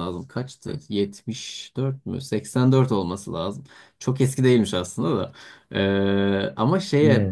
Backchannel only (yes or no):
yes